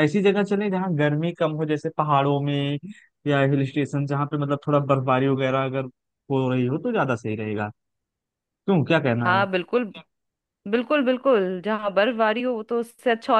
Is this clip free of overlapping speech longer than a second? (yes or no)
yes